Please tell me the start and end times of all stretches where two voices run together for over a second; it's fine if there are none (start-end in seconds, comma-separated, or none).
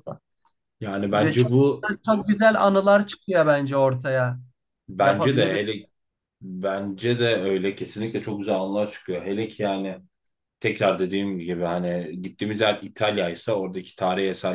none